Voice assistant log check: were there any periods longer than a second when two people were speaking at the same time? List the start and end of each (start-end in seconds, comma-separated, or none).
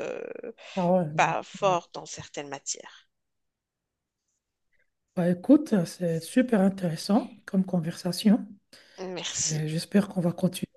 none